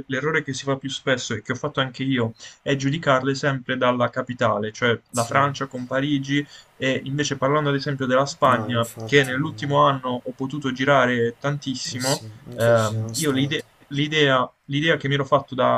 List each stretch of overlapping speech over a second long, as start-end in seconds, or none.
8.4-9.8, 11.9-13.7